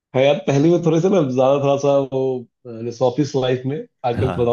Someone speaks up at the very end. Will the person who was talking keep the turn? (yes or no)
yes